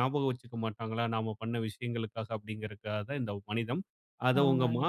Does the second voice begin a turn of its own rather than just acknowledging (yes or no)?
no